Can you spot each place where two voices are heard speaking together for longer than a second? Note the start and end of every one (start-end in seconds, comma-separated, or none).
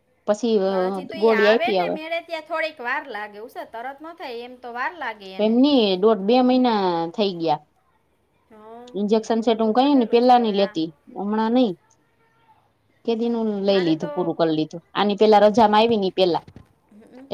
9.2-10.8